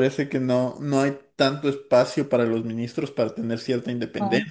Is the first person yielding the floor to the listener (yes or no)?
no